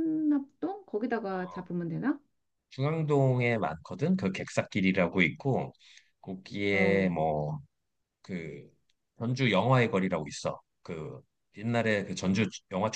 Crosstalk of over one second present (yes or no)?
no